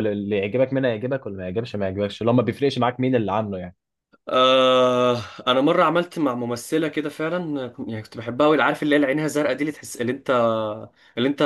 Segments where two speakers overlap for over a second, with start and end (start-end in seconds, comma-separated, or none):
none